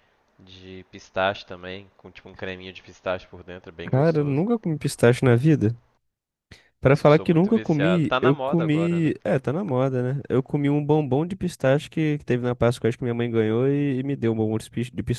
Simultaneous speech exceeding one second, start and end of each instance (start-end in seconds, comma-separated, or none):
6.8-9.1